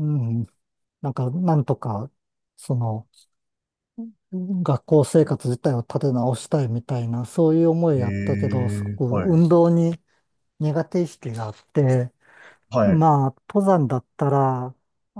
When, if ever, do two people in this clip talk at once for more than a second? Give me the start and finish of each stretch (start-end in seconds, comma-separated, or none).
8.0-9.4